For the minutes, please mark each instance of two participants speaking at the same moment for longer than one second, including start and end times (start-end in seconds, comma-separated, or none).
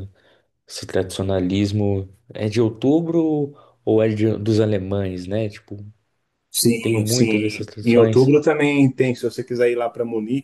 6.8-8.3